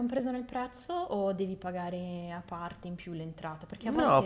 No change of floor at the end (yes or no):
no